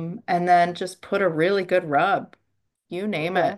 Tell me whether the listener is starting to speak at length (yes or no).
no